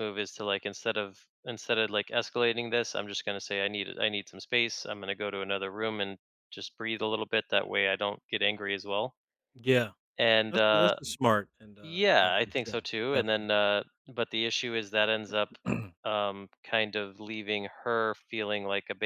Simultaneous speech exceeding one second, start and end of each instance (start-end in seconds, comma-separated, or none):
11.8-13.5